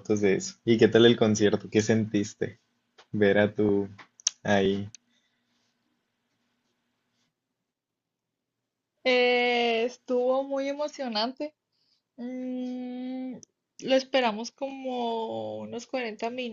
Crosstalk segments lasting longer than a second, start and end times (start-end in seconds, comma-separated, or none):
none